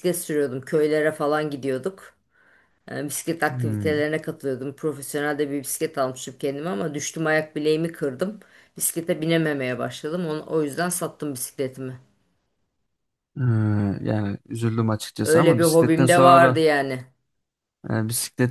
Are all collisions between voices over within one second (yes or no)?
no